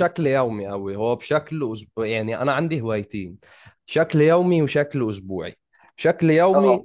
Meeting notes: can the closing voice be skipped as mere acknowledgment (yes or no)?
yes